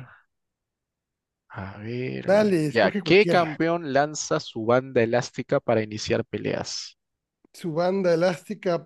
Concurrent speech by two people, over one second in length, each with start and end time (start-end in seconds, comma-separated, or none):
2.3-3.5